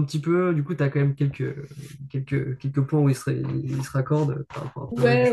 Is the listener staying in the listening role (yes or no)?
no